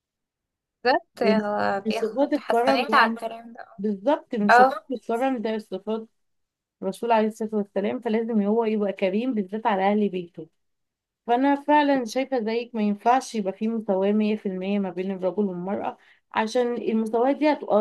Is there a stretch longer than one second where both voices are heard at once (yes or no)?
yes